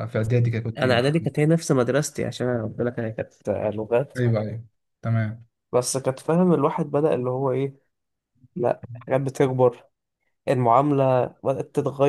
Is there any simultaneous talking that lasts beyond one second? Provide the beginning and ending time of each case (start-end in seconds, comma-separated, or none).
none